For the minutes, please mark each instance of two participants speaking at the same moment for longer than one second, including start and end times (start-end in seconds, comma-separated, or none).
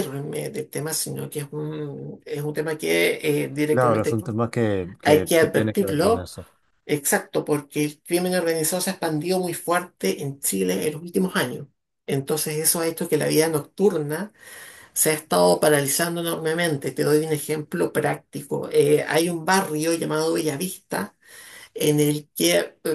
5.0-6.3